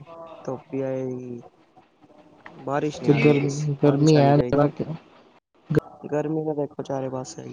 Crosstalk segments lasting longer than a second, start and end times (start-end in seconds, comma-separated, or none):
3.0-4.8